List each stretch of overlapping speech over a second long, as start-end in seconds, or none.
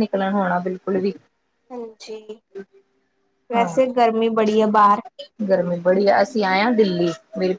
none